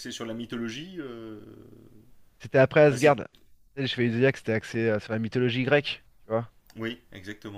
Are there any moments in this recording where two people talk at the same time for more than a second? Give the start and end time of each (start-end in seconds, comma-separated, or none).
none